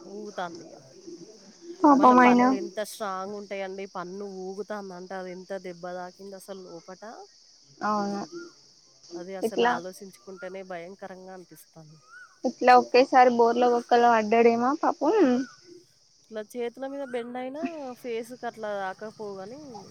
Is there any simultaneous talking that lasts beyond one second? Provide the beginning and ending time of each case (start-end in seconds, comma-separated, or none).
none